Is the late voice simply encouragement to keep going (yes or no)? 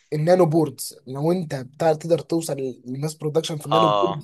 yes